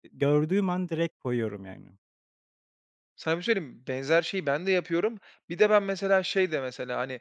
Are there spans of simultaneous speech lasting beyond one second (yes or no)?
no